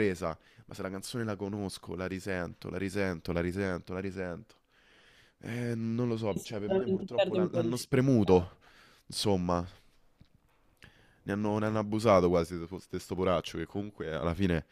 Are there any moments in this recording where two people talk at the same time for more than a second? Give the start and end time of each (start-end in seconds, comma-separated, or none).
6.3-8.5